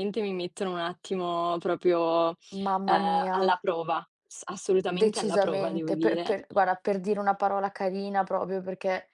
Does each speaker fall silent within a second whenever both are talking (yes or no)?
no